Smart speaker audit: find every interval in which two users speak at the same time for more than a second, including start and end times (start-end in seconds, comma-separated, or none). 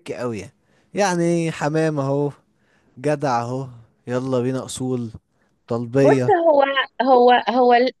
none